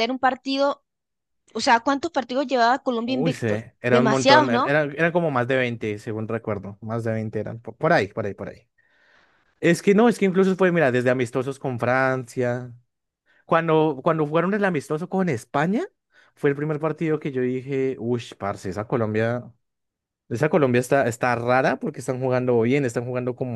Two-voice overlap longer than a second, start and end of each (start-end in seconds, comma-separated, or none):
3.0-4.8